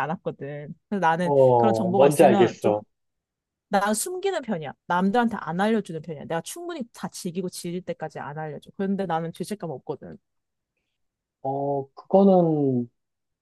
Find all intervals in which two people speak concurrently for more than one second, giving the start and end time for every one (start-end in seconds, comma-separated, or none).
1.2-2.8